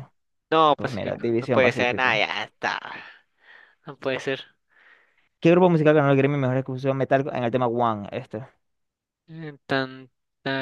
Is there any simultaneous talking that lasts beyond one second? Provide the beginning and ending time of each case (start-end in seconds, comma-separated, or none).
0.8-2.2